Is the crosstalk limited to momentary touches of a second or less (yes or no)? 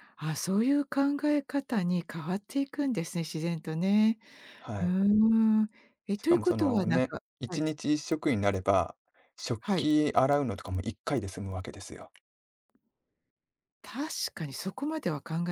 no